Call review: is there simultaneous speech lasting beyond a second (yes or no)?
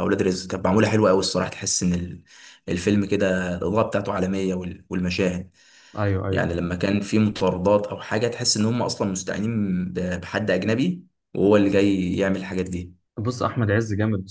no